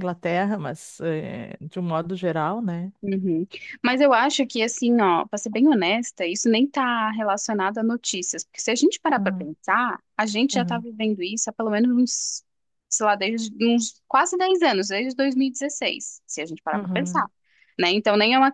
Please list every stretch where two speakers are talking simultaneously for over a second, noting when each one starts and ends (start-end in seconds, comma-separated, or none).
none